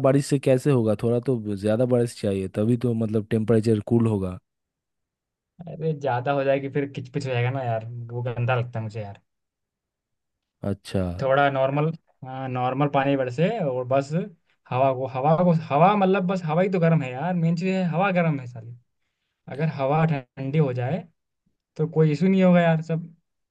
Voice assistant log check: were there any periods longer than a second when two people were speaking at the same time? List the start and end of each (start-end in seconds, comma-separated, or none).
none